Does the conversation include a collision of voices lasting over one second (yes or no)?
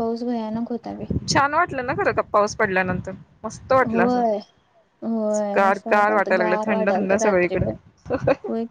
yes